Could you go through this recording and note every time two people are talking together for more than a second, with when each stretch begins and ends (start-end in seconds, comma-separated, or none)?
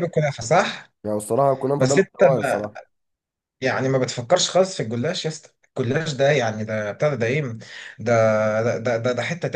none